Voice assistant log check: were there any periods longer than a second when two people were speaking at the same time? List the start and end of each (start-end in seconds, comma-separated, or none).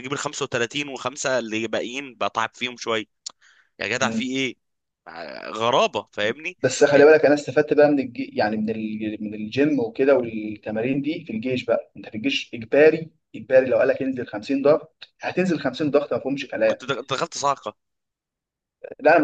none